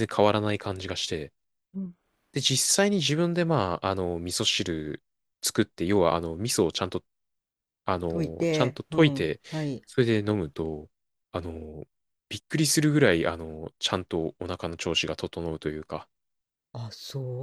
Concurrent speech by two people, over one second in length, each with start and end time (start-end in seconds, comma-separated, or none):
8.1-9.4